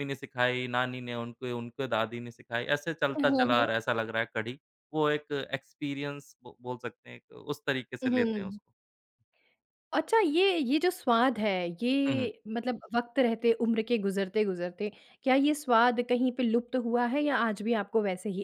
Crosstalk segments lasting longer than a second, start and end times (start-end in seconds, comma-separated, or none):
none